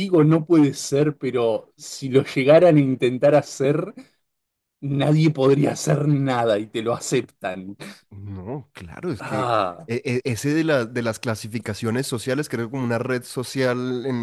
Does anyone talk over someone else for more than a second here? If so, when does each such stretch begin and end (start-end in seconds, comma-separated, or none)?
none